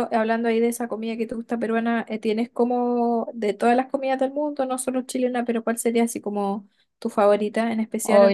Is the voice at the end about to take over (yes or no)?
yes